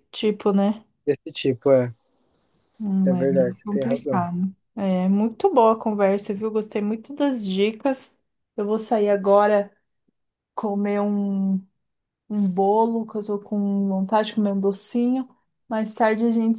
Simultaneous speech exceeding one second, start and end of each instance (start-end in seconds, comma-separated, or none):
3.0-4.2